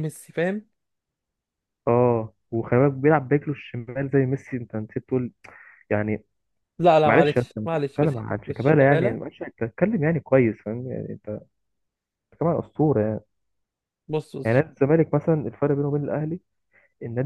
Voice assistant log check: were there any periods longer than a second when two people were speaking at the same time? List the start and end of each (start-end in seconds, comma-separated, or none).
7.0-9.2